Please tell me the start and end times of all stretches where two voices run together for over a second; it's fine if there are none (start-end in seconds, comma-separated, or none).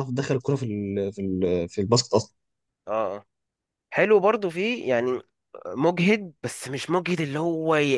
none